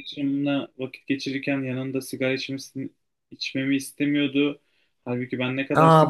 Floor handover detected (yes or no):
yes